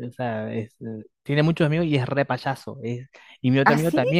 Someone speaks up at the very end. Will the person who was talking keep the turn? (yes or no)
yes